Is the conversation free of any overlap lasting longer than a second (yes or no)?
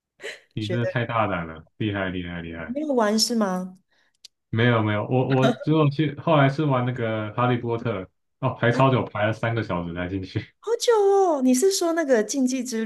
yes